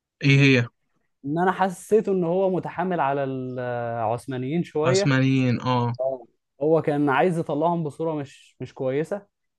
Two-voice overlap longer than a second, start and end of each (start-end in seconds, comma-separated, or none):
none